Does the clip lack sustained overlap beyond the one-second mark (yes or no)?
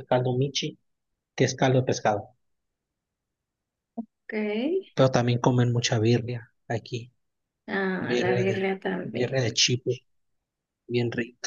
no